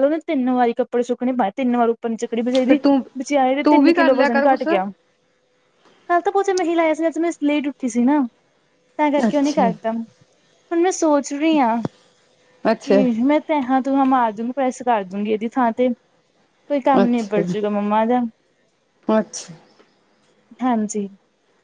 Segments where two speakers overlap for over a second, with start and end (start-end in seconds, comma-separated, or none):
3.6-4.9